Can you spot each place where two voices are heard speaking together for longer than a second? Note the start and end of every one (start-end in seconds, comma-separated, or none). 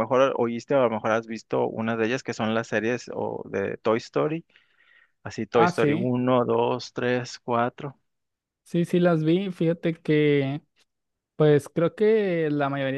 none